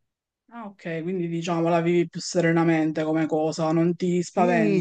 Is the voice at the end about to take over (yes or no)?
yes